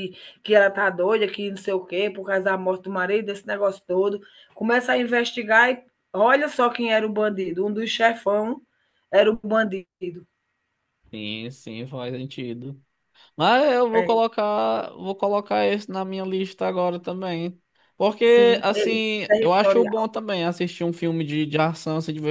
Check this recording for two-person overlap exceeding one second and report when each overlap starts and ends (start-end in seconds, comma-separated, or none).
18.3-20.1